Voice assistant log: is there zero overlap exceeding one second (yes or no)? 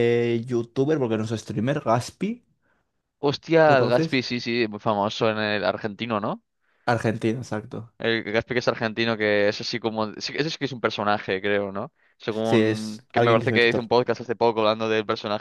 no